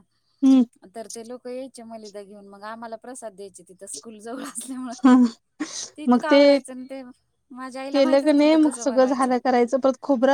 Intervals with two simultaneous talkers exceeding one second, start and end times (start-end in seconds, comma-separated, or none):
7.9-9.3